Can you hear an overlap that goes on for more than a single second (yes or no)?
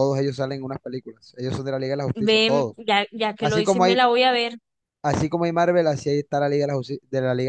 no